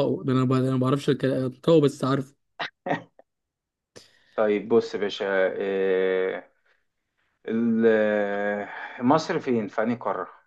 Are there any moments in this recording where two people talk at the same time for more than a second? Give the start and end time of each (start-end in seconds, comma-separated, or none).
none